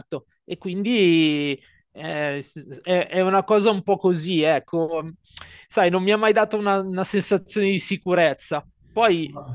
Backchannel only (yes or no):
yes